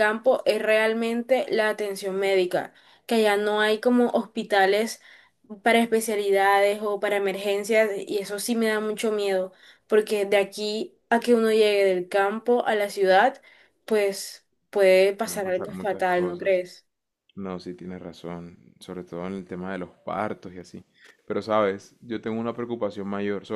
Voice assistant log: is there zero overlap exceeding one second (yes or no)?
no